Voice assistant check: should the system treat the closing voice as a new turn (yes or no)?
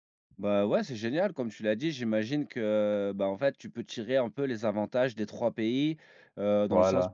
no